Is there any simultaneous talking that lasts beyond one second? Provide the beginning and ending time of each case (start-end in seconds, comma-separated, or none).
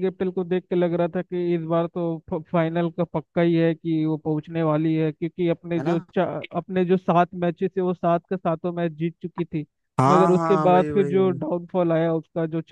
10.1-11.4